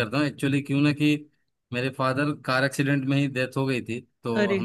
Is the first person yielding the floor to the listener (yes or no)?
no